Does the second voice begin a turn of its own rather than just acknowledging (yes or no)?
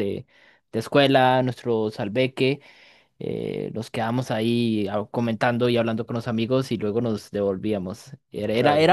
no